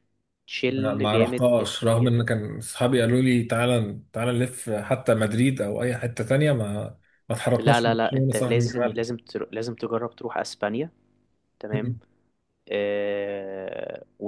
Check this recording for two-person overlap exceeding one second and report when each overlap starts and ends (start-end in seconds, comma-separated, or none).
0.7-2.1, 7.6-9.0